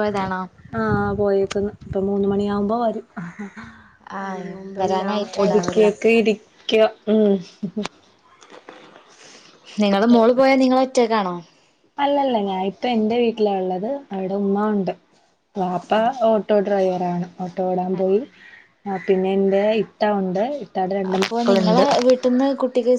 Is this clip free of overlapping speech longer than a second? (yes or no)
no